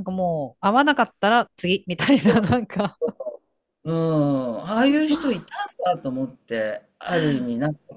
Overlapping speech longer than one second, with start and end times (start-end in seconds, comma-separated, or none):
none